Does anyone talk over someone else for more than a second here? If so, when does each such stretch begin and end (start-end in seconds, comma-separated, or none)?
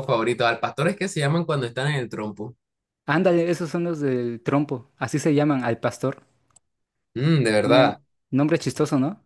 none